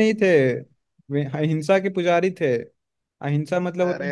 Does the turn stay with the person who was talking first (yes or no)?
yes